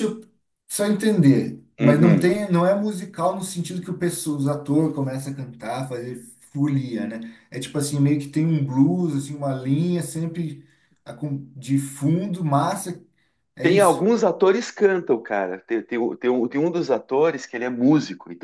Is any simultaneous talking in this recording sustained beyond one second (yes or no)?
no